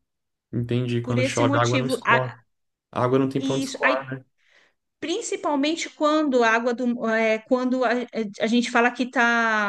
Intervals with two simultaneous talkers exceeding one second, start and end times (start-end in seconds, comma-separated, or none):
1.0-2.2